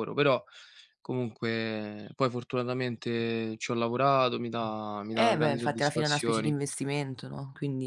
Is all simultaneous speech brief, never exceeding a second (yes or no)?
no